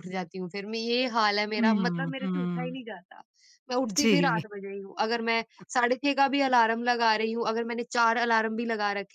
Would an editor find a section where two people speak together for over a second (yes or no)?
yes